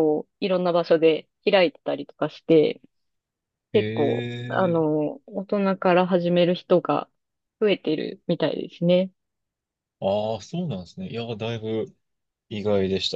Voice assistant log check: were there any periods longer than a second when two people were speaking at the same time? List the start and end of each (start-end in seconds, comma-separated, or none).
3.7-5.0